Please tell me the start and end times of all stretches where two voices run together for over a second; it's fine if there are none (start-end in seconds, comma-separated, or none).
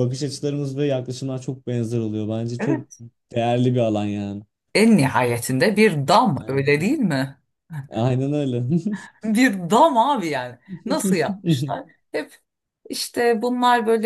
none